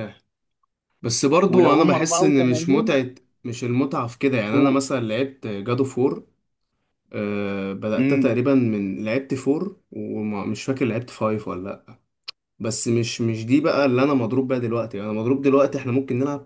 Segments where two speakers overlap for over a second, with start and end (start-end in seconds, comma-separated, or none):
1.5-3.0